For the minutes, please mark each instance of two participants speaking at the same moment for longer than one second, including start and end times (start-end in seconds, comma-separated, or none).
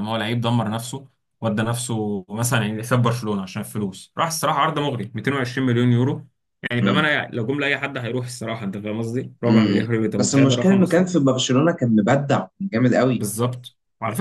9.5-11.1